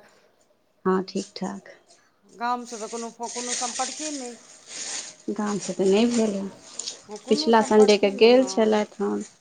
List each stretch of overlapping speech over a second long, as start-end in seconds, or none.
7.3-8.9